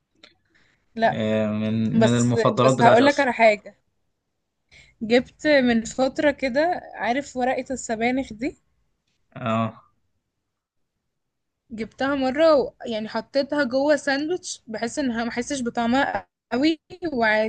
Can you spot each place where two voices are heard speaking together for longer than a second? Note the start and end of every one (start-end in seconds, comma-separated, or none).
1.9-3.3